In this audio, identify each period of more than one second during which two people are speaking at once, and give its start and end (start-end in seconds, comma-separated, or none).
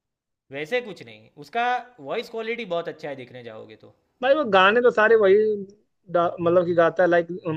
none